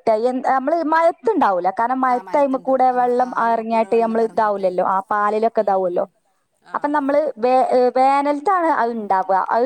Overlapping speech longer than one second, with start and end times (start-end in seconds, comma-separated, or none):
2.1-4.7